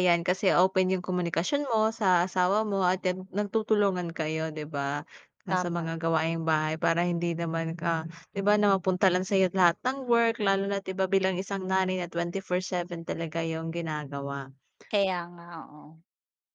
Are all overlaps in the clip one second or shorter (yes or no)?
yes